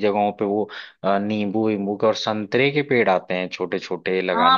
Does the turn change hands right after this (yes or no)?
yes